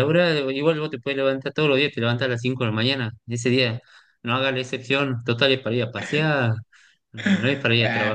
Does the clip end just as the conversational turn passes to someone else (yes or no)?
yes